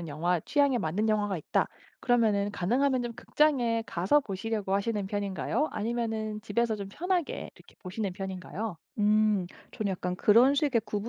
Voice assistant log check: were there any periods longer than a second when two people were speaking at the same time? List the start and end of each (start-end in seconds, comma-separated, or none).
none